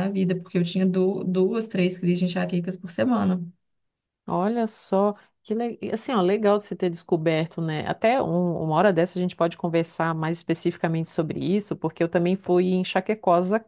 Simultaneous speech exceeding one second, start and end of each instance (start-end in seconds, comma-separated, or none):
none